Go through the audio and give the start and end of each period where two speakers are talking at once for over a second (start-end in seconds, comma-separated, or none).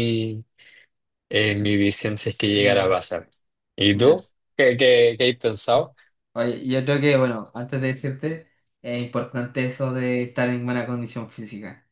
none